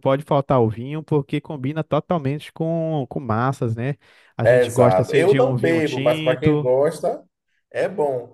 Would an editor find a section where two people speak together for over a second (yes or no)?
yes